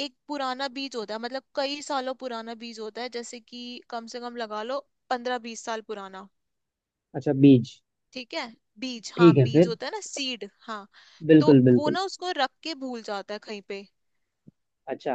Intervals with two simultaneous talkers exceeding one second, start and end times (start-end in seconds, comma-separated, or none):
none